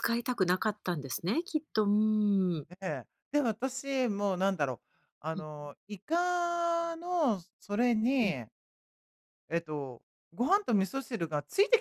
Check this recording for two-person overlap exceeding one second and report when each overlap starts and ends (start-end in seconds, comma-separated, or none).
none